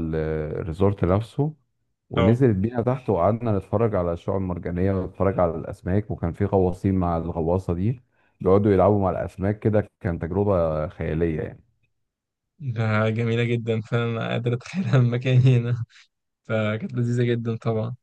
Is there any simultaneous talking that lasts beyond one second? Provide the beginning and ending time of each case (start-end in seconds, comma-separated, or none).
none